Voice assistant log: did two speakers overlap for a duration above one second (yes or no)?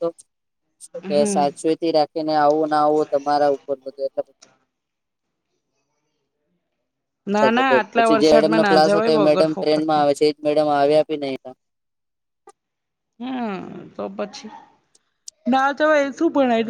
yes